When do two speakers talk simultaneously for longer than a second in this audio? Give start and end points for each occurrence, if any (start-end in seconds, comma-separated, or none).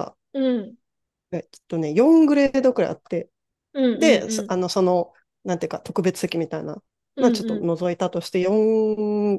none